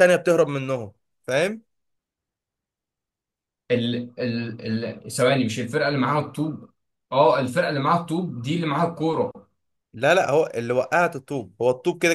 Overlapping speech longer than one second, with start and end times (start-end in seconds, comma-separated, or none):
none